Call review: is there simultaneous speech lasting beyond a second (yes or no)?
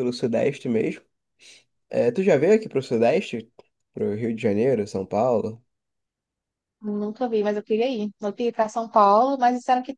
no